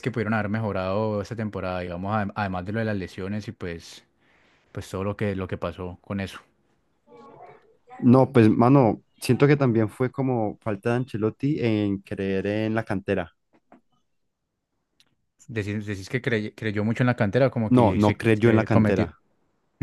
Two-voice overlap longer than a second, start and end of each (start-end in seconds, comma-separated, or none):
17.7-19.1